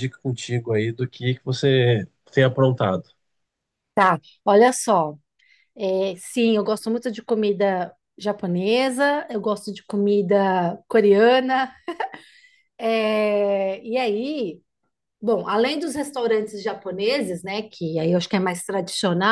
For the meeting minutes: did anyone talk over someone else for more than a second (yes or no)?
no